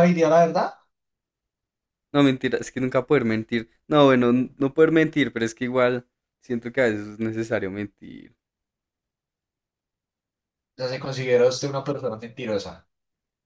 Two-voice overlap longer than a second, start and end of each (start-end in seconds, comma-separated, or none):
none